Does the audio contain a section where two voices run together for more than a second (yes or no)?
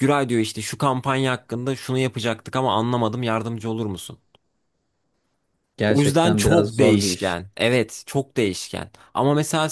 yes